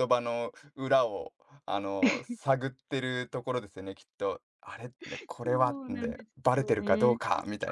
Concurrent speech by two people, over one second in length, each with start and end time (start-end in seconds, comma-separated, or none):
5.4-7.1